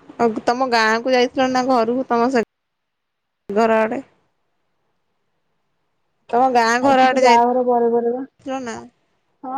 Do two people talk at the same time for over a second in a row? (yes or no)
yes